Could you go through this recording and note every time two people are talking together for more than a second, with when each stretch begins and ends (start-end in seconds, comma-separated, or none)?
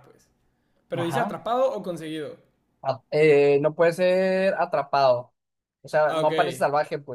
none